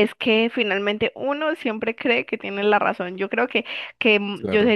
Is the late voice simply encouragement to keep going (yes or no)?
yes